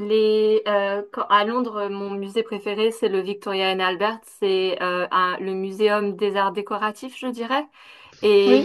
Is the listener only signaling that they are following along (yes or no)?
yes